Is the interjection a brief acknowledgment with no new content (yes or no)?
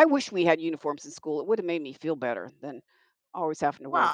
no